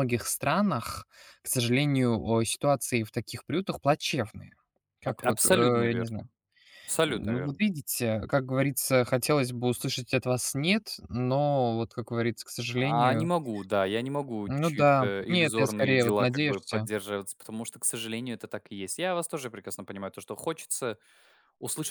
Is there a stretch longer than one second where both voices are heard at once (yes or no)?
yes